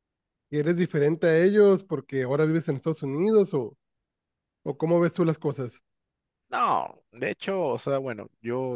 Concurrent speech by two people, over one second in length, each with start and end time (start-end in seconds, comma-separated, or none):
none